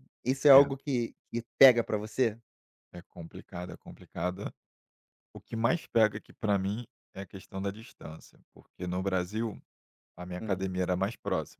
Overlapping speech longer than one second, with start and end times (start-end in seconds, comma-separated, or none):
none